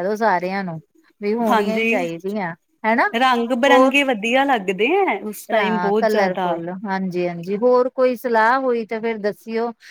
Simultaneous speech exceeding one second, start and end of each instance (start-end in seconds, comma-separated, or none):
none